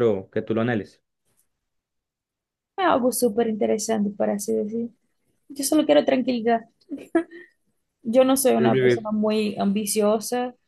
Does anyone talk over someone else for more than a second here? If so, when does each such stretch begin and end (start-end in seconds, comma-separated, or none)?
none